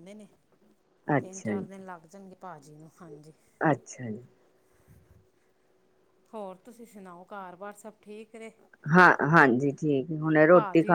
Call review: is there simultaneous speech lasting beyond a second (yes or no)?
no